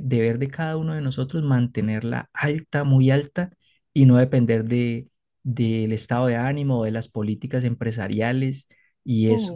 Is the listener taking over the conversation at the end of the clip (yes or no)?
yes